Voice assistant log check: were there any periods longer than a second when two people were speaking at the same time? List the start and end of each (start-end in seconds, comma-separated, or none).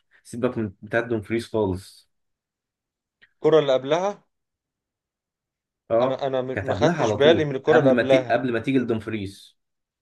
6.0-8.4